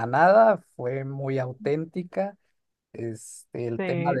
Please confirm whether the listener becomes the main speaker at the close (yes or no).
no